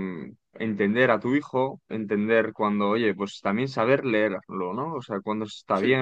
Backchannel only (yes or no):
yes